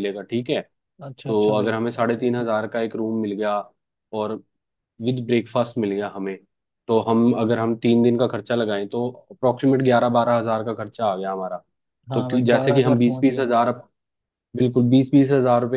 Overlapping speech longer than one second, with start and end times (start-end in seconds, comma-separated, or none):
12.1-13.5